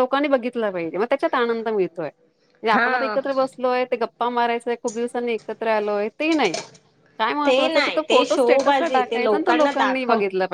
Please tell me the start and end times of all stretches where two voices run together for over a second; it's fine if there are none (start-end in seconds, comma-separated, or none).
7.5-9.7